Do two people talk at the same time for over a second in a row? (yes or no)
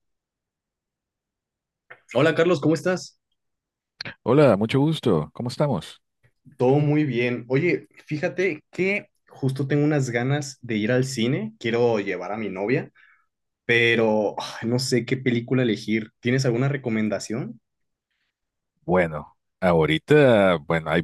no